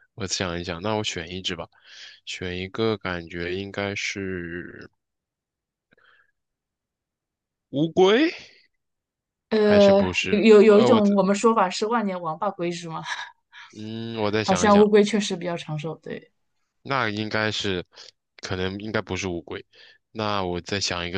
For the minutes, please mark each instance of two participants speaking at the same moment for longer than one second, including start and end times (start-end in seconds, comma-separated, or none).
9.6-11.1